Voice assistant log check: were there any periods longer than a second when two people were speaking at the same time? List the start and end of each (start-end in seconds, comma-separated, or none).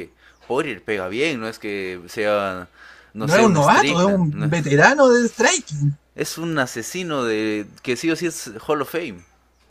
3.2-4.5